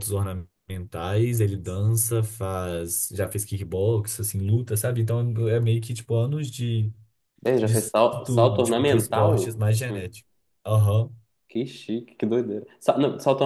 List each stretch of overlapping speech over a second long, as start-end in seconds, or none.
7.6-10.0